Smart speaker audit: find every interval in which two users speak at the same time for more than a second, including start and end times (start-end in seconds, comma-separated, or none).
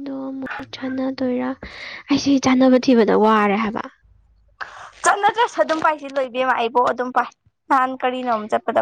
none